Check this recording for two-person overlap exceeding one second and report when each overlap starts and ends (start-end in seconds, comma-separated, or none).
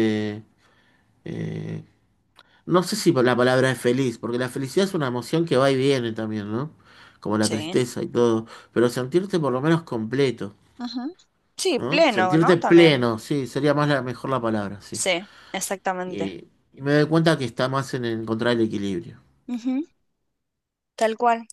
11.8-13.1